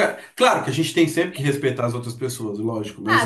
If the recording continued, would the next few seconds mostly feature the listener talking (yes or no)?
yes